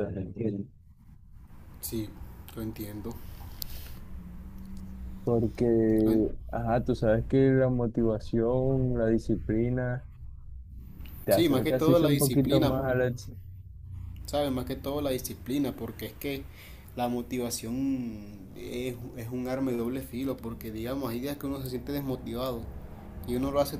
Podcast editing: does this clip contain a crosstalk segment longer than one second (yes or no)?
yes